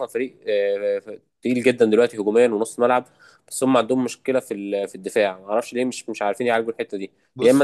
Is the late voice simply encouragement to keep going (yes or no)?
yes